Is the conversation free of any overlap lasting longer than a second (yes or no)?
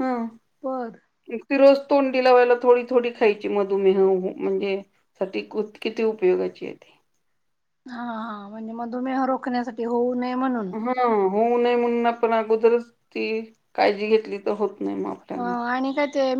yes